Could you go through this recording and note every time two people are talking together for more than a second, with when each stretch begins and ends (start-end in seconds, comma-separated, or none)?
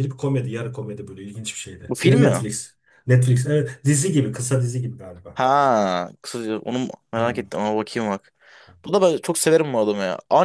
none